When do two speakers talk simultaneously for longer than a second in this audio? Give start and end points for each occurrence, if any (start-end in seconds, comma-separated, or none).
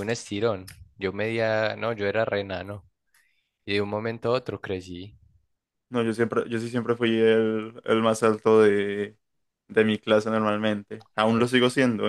none